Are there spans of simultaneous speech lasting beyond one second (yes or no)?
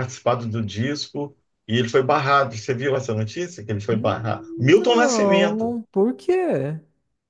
yes